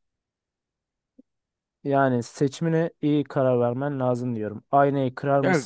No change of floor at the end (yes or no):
yes